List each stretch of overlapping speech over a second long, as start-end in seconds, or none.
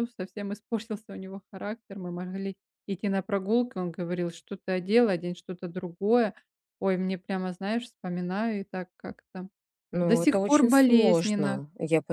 10.0-11.6